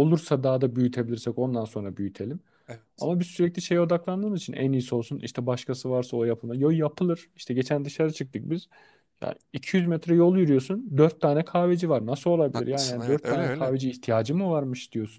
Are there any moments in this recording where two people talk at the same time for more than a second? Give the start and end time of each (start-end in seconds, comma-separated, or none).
12.5-13.8